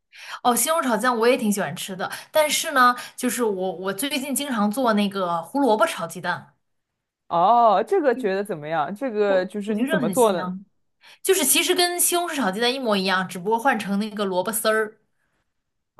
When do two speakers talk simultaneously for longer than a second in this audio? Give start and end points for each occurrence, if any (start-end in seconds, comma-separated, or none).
9.3-10.5